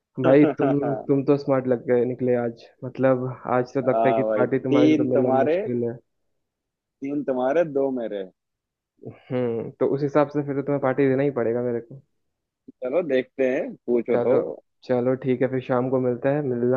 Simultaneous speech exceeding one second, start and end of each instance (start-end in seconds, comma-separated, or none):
3.9-5.6